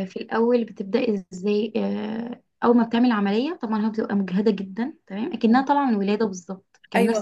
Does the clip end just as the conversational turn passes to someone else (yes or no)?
yes